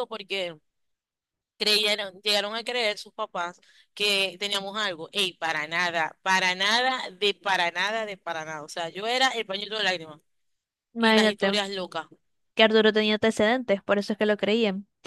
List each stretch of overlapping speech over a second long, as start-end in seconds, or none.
none